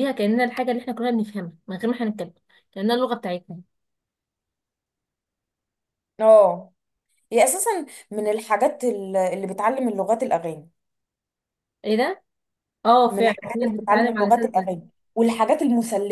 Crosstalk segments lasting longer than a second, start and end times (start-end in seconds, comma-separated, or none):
13.1-14.7